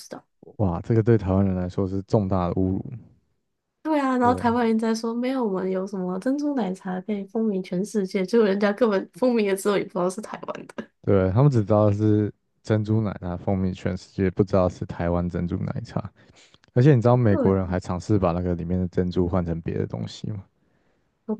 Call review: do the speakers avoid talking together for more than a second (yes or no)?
yes